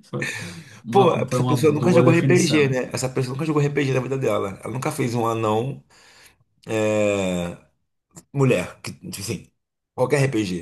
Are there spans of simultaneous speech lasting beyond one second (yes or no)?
yes